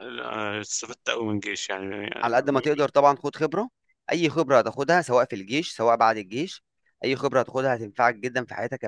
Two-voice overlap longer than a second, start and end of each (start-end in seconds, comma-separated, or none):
none